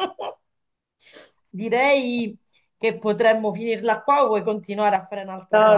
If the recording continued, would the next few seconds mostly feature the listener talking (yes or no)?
yes